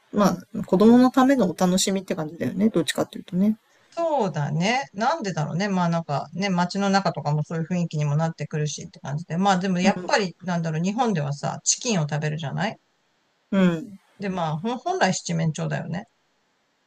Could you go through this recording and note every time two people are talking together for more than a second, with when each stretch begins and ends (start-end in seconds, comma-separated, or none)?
none